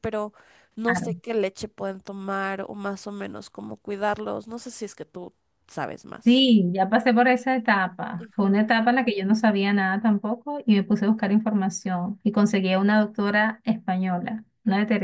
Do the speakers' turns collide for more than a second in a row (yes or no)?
no